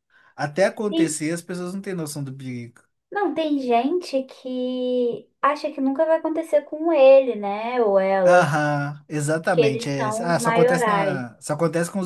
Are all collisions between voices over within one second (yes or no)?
no